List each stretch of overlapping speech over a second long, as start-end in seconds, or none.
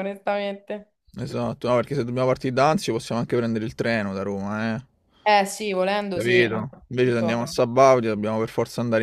6.1-7.5